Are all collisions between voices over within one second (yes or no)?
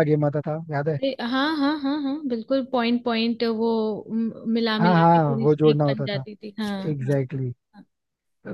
no